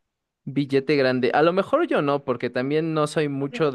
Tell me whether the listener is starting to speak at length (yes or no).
no